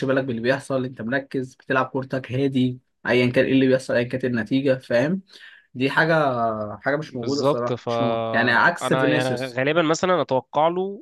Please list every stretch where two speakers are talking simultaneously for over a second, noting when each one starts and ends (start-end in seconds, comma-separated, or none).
7.1-9.6